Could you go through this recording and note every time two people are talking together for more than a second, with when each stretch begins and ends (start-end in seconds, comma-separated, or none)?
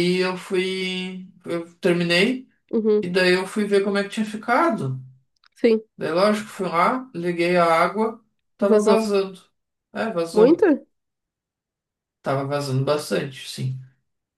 none